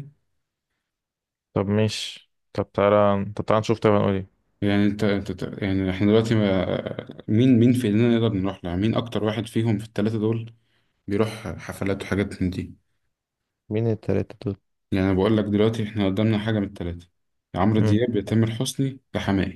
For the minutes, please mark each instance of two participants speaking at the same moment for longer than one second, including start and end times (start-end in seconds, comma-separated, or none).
none